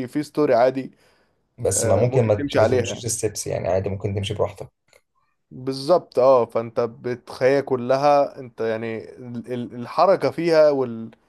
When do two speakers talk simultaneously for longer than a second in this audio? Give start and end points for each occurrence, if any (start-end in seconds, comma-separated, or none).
1.7-3.0